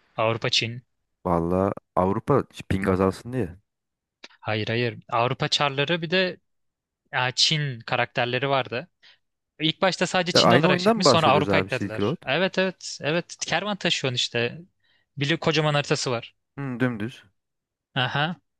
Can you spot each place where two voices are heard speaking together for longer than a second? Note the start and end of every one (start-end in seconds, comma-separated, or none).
10.3-12.2